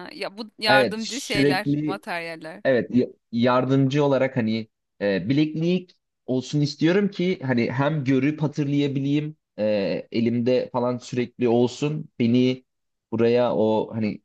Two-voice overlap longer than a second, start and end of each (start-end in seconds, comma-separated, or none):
0.7-2.0